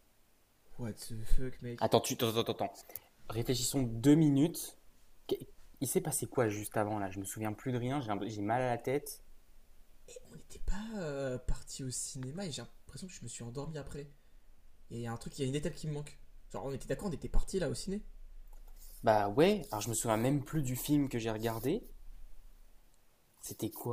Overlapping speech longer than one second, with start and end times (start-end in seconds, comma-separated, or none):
none